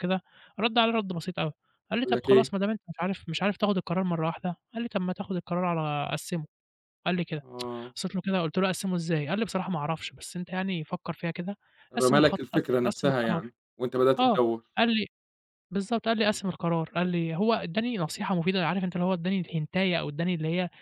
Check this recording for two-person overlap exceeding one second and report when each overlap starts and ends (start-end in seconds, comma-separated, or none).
12.0-13.5